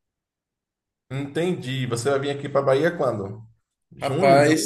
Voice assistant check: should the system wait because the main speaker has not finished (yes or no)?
no